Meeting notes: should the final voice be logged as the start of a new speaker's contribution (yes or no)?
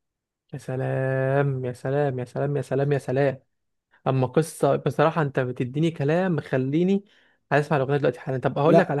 no